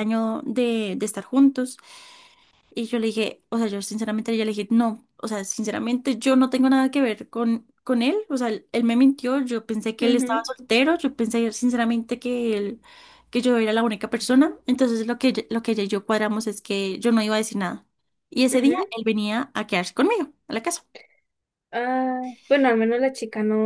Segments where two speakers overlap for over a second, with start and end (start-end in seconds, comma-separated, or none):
none